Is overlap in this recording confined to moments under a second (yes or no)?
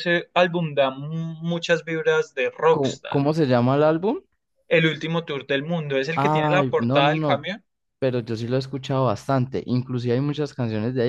no